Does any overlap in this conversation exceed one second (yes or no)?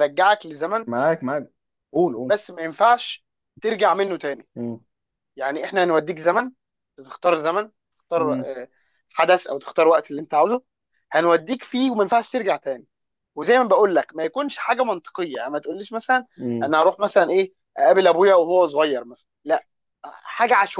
no